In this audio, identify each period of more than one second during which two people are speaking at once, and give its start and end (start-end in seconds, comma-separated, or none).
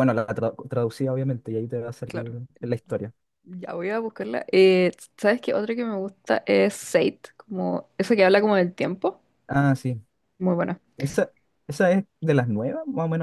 none